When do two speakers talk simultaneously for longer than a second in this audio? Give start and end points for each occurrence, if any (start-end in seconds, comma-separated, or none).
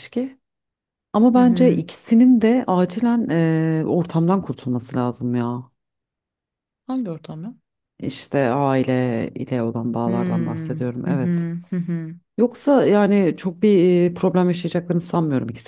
10.1-11.5